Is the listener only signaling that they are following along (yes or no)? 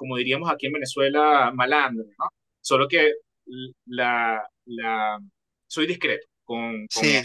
no